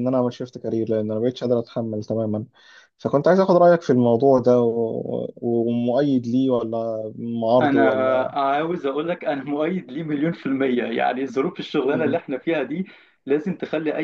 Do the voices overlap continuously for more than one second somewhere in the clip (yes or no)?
no